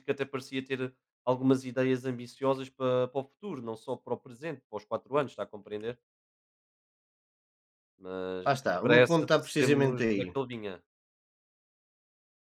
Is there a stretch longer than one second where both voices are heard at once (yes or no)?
yes